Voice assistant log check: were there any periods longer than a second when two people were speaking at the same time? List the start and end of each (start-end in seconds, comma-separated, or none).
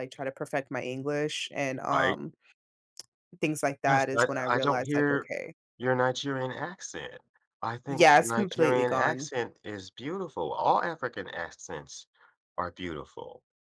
3.8-5.3, 7.9-9.3